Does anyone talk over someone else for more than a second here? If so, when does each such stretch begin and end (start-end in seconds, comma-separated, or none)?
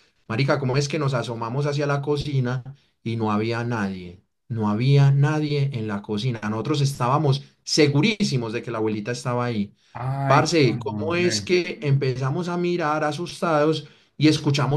10.3-11.5